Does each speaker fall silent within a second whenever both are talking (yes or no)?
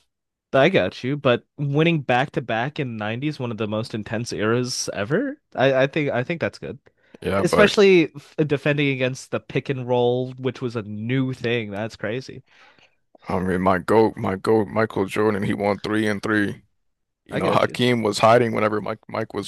yes